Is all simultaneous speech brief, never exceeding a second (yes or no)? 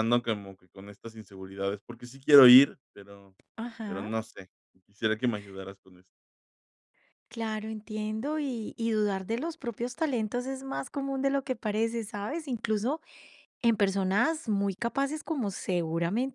yes